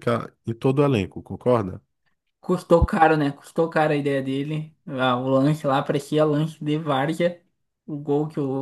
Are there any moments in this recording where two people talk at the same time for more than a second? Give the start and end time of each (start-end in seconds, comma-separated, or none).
none